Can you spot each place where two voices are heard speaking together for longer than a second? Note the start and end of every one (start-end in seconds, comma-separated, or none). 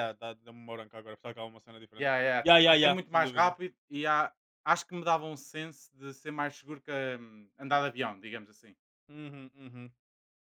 2.0-3.5